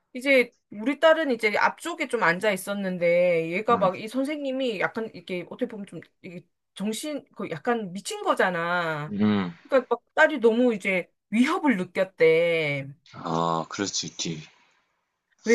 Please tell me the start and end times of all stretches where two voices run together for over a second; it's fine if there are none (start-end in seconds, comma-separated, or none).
none